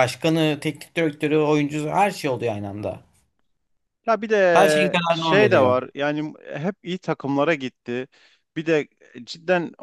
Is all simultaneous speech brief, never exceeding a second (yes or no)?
no